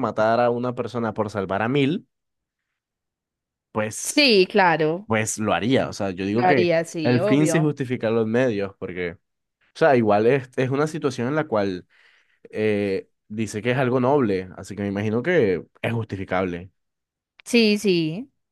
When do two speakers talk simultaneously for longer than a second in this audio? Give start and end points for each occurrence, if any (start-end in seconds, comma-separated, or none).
6.3-7.7